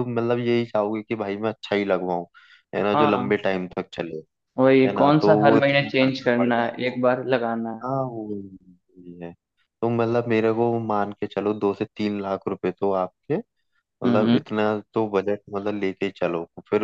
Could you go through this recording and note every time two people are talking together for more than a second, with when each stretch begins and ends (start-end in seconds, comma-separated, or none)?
4.9-7.0